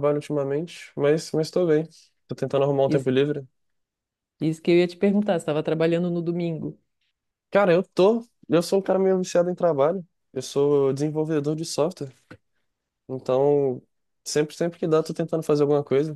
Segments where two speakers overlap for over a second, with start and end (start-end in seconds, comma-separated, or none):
none